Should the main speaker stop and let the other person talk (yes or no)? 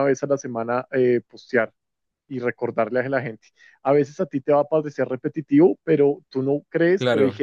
no